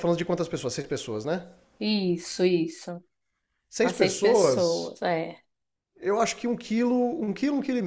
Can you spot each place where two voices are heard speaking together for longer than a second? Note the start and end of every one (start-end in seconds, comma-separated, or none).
3.8-5.0